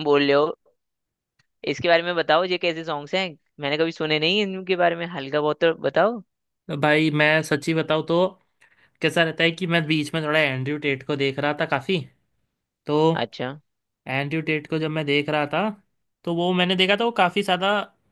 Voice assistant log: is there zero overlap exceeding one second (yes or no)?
yes